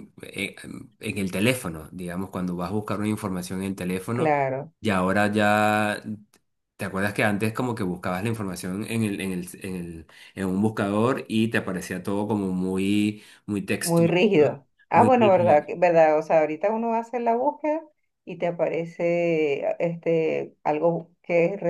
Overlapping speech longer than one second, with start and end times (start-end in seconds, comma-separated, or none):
13.8-15.7